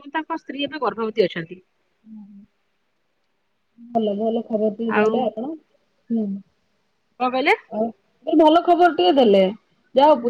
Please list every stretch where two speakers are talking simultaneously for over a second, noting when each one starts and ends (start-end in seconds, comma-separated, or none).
none